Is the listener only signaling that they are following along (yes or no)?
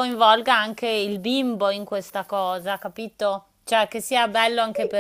no